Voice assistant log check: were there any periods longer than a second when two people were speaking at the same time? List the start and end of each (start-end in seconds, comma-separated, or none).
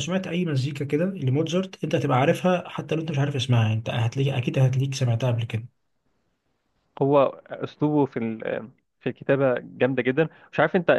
none